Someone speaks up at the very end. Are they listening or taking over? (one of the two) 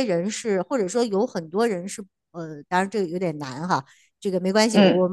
listening